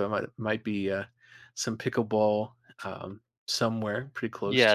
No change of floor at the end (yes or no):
no